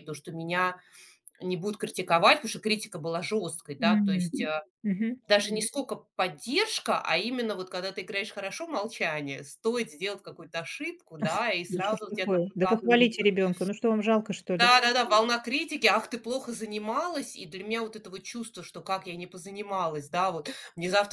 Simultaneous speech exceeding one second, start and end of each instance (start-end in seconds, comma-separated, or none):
11.7-13.3